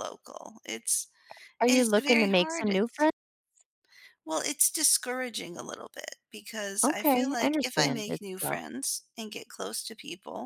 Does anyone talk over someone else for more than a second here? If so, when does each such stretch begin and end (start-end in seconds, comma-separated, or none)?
1.7-3.1, 6.8-8.6